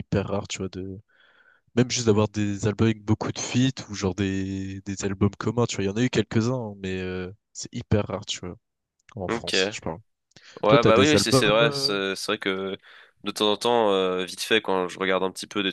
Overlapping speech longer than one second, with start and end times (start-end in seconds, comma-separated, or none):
10.7-11.9